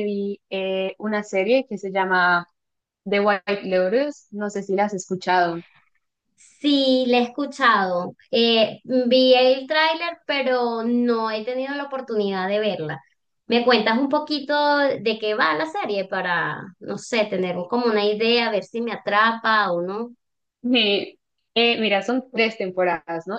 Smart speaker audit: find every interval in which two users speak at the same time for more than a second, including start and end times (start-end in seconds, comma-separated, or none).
none